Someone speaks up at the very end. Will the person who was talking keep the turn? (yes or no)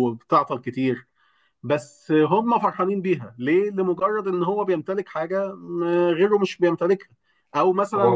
yes